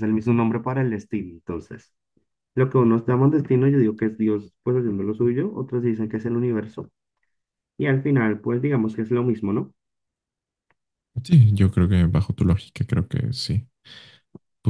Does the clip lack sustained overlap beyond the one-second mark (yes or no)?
yes